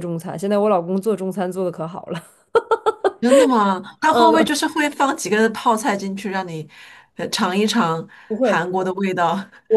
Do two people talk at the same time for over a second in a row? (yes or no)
no